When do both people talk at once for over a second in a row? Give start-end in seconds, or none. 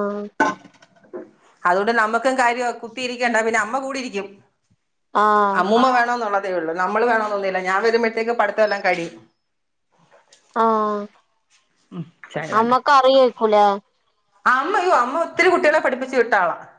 none